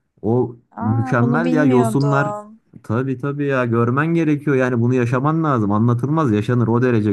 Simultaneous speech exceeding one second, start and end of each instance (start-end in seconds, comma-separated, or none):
0.8-2.3